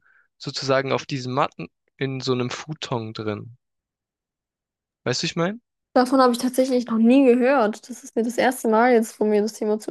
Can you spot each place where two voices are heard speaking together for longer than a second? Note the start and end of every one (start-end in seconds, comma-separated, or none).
none